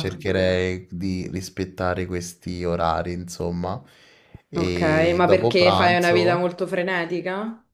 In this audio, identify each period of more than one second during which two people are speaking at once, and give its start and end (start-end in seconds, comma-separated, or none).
4.5-6.4